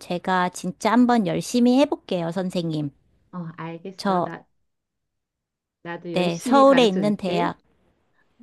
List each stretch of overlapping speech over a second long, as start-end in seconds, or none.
6.1-7.5